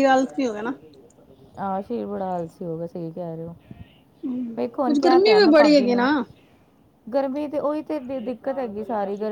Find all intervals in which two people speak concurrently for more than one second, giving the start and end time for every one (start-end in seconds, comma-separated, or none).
4.6-6.1